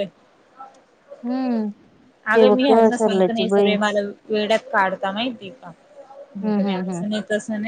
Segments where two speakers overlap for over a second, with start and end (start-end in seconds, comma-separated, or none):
2.3-3.7